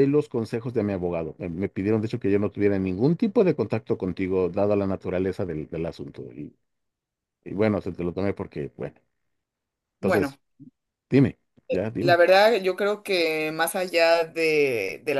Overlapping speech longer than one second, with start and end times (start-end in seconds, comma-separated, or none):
none